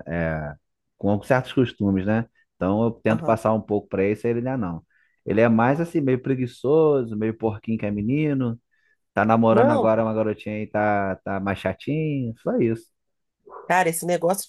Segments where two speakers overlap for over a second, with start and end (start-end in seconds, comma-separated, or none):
none